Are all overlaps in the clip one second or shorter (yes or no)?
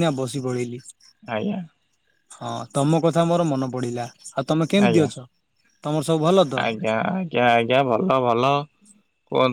yes